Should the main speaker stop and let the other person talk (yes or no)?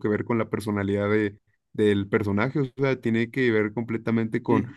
no